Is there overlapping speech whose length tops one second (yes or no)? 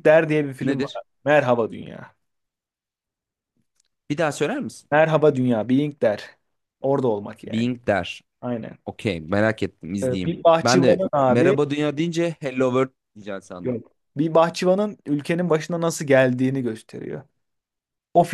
yes